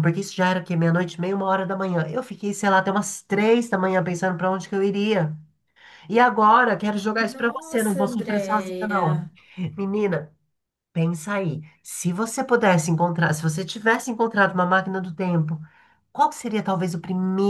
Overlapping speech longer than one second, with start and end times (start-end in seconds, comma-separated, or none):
7.1-9.2